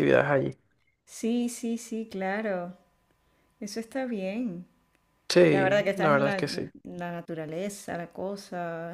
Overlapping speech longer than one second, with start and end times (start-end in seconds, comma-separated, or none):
5.4-6.7